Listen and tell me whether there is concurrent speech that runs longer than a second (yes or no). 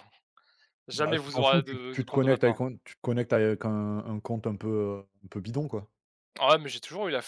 yes